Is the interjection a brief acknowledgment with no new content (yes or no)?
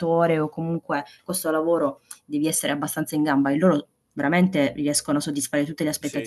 no